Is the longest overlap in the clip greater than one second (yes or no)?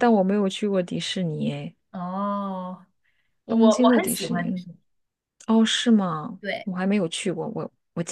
yes